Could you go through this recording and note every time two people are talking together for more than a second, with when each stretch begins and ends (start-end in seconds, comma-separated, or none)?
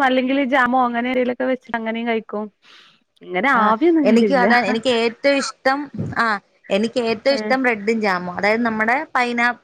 none